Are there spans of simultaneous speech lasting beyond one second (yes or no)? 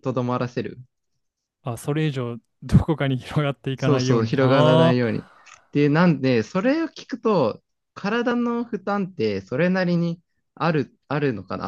yes